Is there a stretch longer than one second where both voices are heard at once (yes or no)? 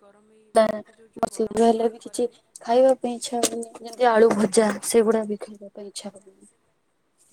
yes